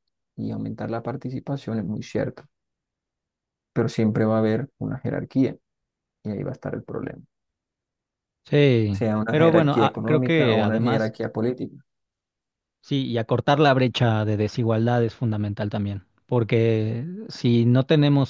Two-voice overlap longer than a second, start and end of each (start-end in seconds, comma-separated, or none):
8.9-11.1